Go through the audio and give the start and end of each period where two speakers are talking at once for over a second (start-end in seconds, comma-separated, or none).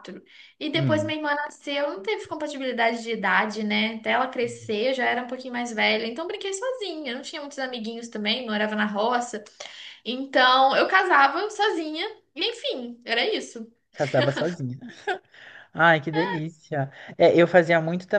none